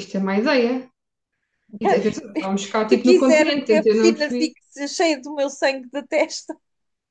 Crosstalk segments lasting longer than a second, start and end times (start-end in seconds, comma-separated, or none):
2.9-4.5